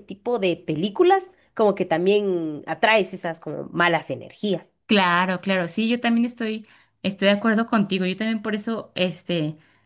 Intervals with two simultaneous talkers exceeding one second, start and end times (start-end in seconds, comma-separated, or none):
none